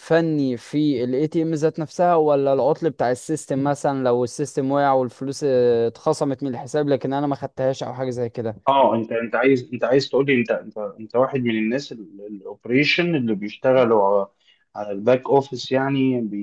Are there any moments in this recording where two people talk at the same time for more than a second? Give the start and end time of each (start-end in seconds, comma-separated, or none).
none